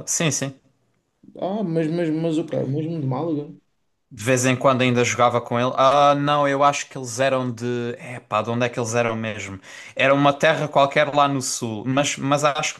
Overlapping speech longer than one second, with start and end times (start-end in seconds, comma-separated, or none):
none